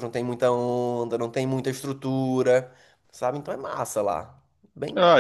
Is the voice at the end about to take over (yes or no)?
yes